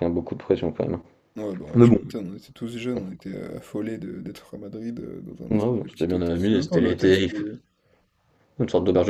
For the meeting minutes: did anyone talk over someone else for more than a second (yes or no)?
yes